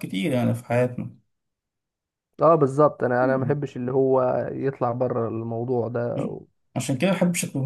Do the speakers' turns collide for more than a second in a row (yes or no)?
no